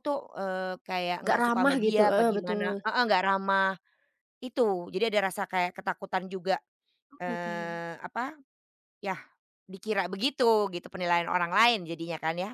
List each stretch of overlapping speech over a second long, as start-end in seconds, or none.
1.2-2.7